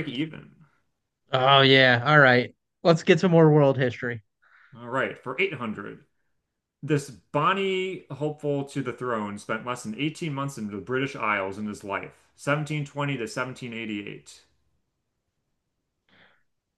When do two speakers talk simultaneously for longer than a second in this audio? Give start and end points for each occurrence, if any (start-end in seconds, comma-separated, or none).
none